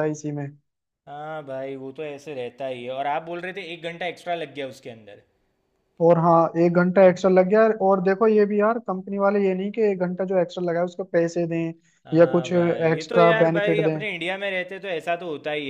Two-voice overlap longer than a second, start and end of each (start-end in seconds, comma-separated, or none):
12.2-14.0